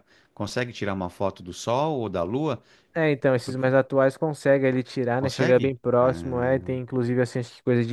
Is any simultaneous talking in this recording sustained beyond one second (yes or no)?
yes